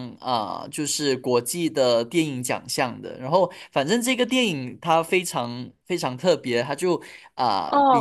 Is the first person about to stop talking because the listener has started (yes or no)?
yes